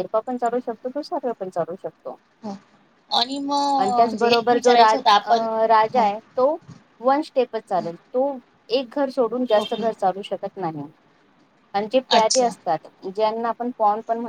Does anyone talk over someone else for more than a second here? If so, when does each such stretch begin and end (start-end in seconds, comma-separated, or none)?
3.8-5.3